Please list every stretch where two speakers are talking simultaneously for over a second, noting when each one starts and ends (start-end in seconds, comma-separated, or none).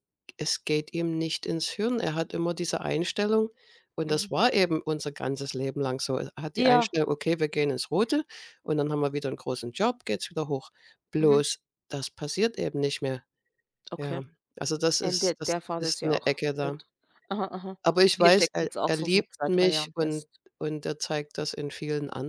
15.0-16.8, 18.1-20.4